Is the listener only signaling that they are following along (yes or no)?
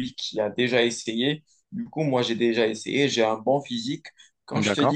yes